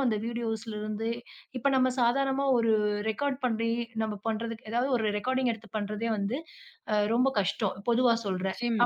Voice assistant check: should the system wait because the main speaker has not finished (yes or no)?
yes